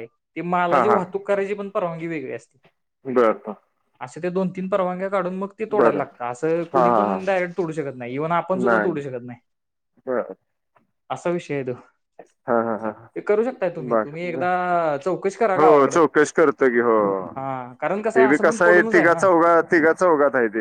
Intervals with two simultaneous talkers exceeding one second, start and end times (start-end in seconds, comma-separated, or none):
17.4-19.3